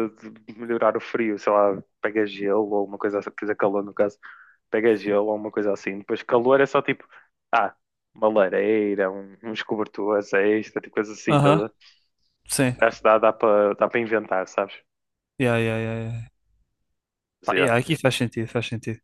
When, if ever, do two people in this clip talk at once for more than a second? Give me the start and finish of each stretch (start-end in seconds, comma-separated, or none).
none